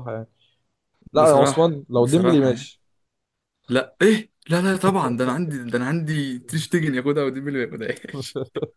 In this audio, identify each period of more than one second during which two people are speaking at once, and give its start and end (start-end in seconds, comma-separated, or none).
1.1-2.7